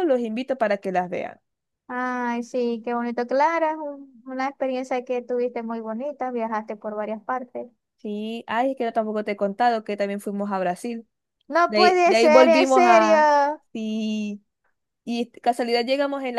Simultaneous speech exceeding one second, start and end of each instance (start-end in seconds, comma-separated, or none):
11.7-13.3